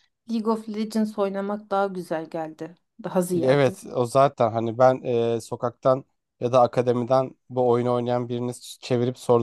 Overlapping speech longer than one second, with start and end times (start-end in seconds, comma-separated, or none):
none